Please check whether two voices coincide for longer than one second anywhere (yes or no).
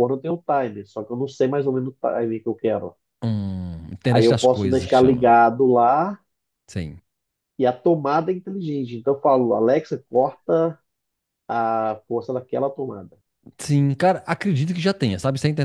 yes